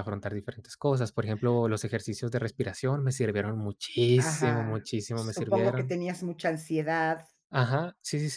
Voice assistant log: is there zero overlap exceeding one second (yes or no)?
no